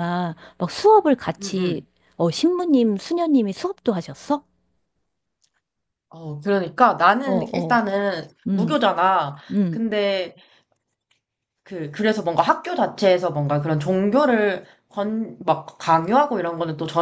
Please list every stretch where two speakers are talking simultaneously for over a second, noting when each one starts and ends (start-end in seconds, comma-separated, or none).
none